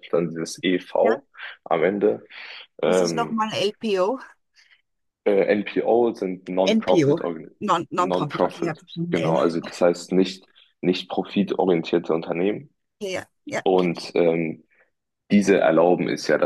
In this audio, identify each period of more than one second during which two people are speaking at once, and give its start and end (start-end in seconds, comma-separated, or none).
8.0-9.4